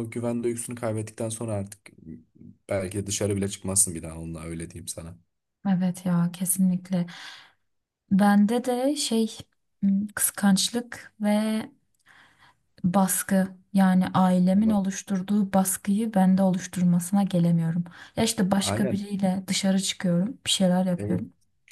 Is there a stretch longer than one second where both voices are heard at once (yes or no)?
no